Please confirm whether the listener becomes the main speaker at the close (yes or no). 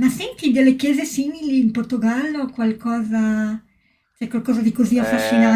no